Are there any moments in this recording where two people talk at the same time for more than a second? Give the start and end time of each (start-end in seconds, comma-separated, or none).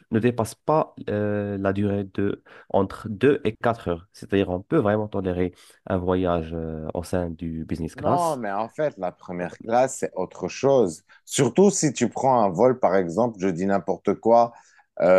none